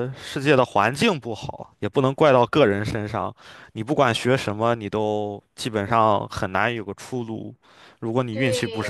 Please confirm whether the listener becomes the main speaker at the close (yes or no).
yes